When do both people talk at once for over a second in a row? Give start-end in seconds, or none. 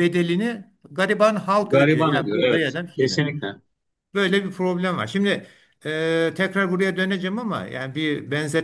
1.6-3.2